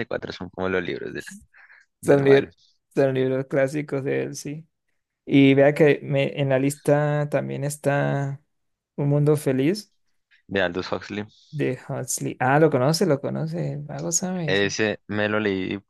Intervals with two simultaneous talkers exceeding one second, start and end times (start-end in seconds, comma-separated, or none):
none